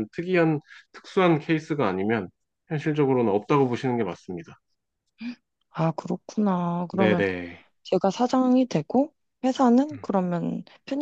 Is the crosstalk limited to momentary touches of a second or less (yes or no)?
yes